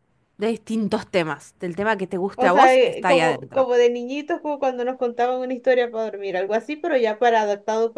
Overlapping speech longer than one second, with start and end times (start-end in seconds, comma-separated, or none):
2.4-3.7